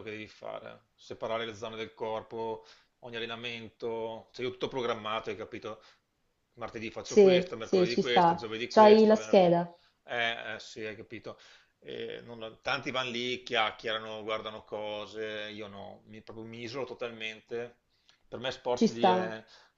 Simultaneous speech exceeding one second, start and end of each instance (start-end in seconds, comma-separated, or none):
7.0-9.4